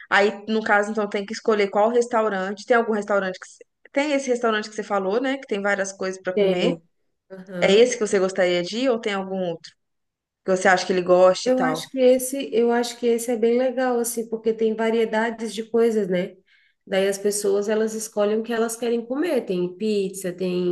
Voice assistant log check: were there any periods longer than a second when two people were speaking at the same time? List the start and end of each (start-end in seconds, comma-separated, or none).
none